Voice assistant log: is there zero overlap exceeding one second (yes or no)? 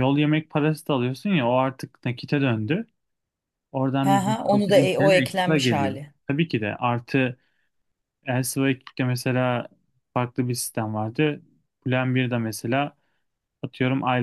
no